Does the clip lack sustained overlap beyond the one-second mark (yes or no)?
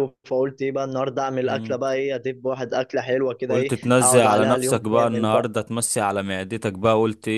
no